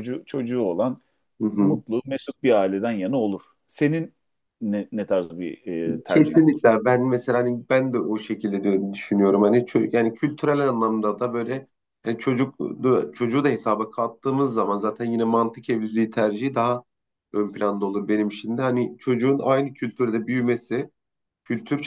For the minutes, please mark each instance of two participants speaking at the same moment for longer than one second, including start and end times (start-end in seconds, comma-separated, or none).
none